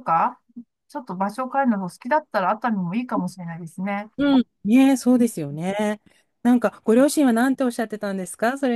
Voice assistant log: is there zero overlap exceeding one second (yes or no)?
yes